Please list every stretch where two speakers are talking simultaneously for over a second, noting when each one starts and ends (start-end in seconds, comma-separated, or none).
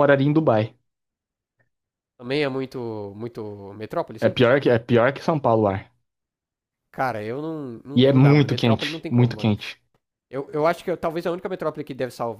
7.9-9.5